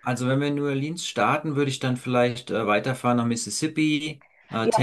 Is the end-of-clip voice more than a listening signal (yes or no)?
yes